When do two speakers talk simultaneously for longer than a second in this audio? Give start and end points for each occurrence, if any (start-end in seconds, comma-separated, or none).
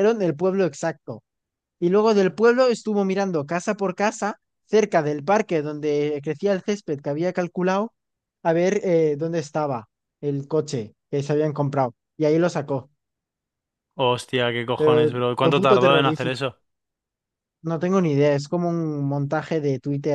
14.8-16.4